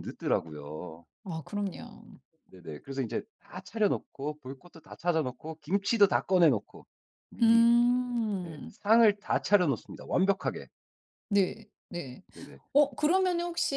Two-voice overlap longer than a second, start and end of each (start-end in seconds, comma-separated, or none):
none